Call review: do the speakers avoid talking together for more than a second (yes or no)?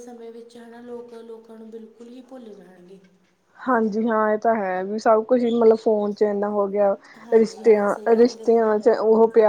no